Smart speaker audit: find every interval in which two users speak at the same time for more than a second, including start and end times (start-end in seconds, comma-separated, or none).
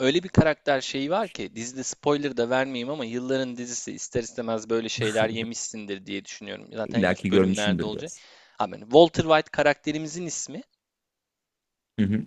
6.8-8.1